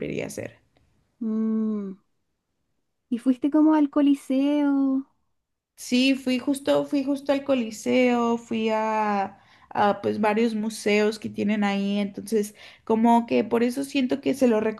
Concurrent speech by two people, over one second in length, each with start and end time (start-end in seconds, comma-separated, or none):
none